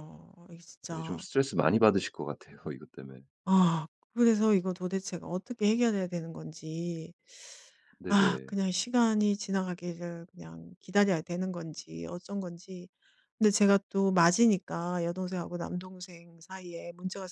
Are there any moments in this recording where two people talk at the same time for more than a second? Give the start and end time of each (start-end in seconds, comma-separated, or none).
none